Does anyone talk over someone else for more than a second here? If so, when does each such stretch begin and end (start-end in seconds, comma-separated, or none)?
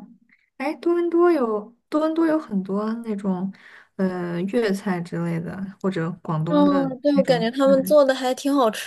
6.5-8.0